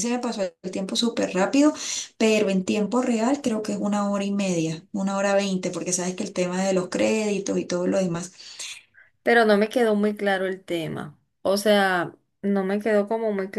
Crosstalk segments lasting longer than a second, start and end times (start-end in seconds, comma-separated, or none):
none